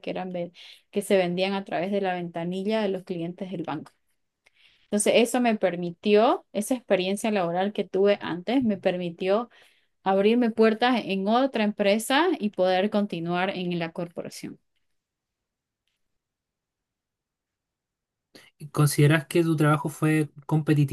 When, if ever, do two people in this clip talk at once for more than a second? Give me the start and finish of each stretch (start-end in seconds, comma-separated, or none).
none